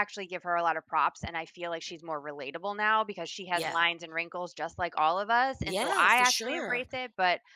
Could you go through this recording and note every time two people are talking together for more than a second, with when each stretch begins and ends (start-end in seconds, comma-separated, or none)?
5.6-6.8